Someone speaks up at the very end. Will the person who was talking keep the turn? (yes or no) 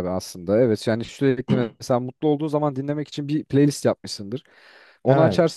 yes